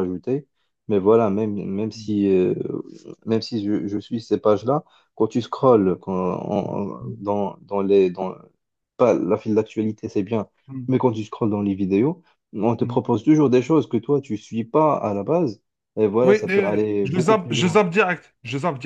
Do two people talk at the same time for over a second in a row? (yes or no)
yes